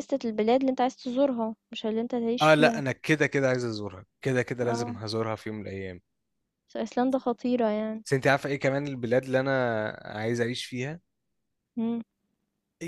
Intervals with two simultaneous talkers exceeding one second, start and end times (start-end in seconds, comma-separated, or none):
none